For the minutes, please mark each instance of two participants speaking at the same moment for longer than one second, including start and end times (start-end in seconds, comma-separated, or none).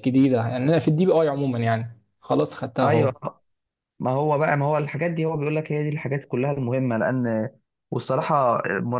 none